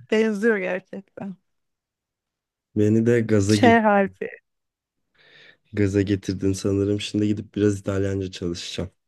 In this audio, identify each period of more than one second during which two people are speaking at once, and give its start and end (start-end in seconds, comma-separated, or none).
none